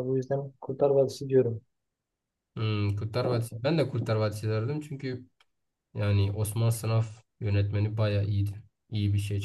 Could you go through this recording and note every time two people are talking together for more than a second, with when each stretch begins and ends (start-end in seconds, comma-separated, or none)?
none